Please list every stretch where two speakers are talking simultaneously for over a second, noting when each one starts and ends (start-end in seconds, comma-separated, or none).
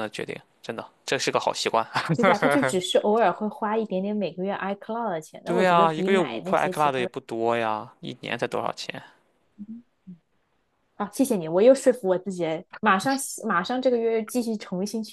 5.4-7.1